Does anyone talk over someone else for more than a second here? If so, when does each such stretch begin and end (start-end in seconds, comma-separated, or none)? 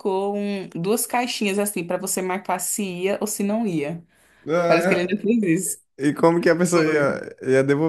none